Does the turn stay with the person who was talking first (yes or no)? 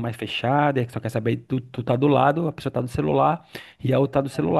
yes